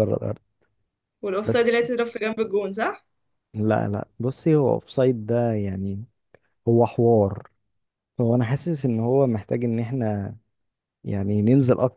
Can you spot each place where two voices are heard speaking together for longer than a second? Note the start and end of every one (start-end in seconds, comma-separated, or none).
none